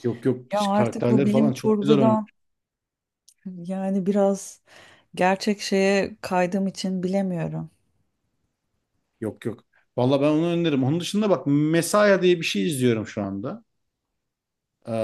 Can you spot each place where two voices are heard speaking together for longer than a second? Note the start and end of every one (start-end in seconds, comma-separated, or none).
0.5-2.3